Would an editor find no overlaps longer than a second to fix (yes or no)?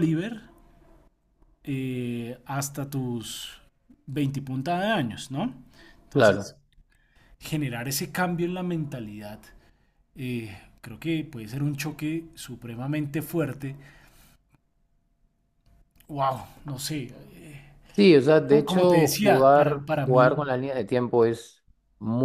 no